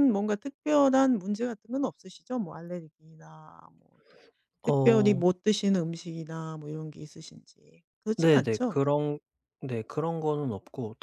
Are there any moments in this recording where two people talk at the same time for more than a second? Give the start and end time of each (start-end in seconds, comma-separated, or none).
none